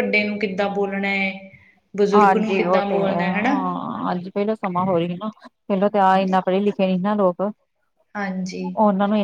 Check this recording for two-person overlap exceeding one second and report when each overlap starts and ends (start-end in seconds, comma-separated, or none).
2.1-3.5